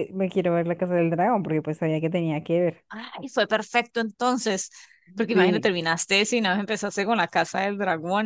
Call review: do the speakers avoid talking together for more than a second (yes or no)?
yes